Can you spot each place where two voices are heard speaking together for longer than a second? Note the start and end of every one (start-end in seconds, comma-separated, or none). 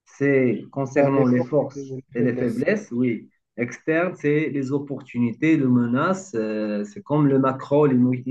0.9-2.6